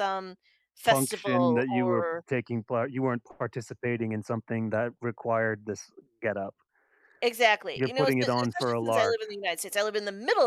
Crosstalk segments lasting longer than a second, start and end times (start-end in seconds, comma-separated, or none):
0.8-2.2, 7.8-9.2